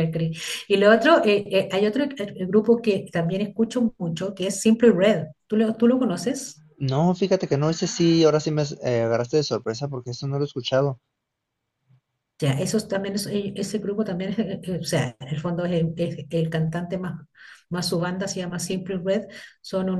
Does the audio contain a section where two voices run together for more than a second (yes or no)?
no